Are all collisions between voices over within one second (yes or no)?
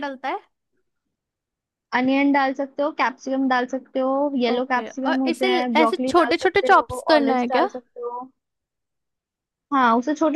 no